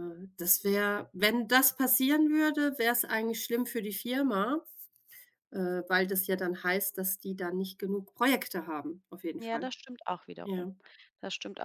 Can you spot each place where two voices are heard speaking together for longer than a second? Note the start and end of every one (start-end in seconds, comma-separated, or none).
none